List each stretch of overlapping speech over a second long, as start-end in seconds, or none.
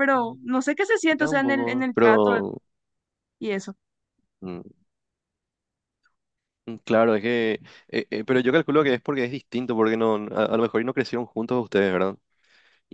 1.1-2.3